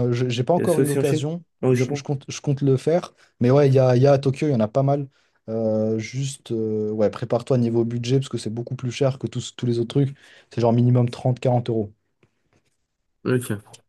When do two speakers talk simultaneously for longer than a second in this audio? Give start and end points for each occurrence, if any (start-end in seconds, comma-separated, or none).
0.6-2.1